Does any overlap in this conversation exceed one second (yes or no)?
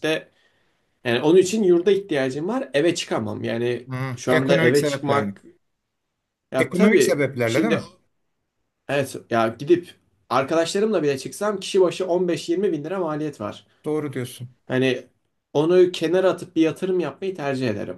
yes